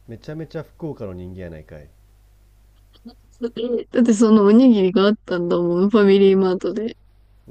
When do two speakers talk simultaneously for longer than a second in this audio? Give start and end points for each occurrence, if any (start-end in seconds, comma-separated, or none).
none